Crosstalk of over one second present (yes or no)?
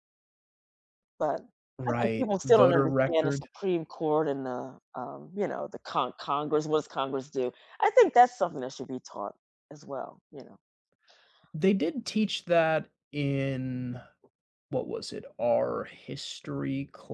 yes